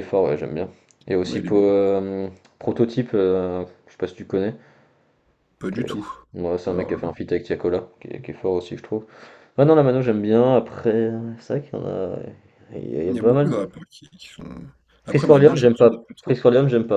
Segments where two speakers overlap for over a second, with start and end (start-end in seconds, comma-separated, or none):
15.1-16.4